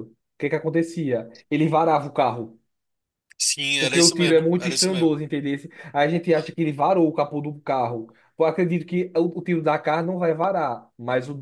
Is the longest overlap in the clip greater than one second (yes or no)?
yes